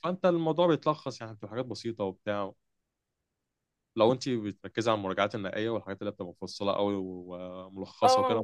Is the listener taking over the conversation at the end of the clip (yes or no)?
no